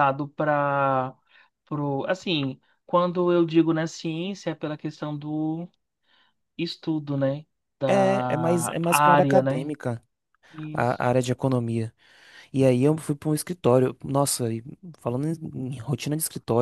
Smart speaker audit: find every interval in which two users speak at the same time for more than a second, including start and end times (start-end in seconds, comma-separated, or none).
7.8-9.7